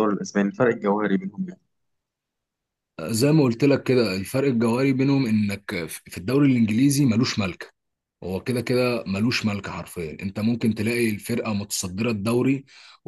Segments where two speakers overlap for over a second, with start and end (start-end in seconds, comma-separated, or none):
none